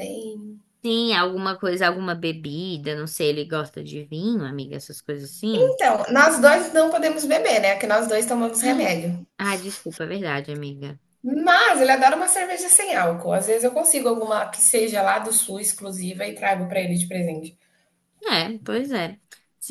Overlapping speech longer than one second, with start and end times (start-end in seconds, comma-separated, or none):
none